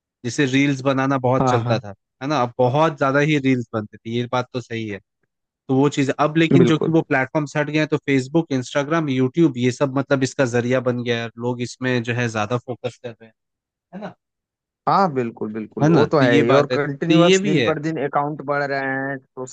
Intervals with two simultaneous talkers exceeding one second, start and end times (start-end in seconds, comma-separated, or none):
15.8-17.8